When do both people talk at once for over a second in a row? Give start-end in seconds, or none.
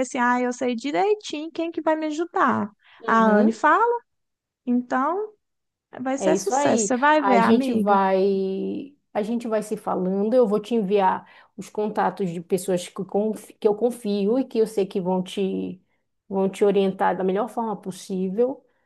6.2-8.0